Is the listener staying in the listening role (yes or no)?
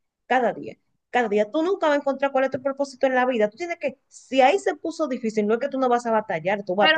no